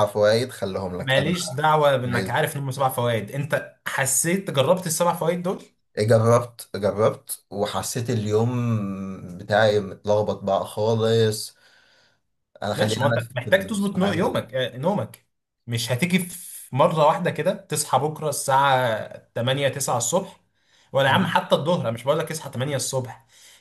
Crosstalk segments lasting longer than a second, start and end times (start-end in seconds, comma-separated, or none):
12.7-14.5